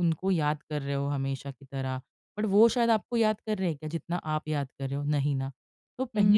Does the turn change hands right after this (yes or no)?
no